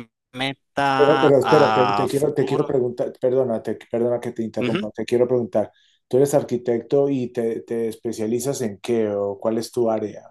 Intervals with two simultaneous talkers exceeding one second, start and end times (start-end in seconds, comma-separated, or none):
0.9-2.7